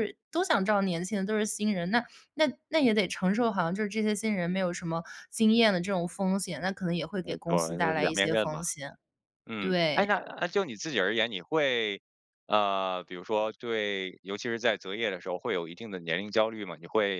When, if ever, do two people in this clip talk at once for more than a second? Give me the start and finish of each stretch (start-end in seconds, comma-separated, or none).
7.2-8.6